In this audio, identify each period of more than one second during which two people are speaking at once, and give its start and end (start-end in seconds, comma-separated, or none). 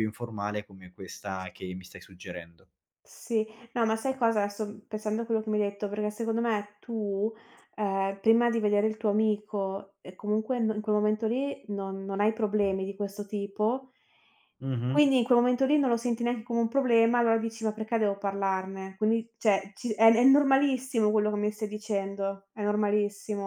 none